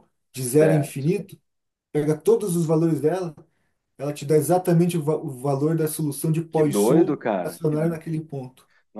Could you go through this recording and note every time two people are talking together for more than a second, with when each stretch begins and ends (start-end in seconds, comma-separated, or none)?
6.5-8.0